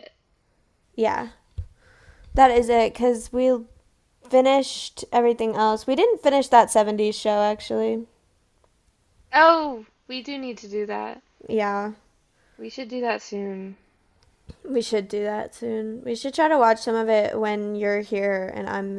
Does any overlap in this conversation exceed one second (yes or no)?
no